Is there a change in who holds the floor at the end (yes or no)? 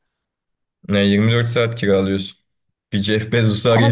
no